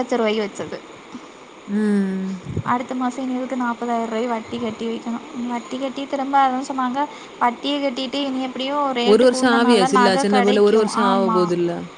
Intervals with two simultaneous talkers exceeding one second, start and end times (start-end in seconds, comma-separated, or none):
9.3-11.4